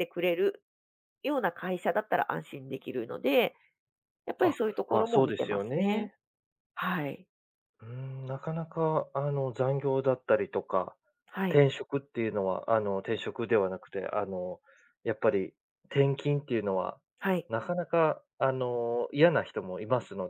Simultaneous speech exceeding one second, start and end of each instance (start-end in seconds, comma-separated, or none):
4.4-6.1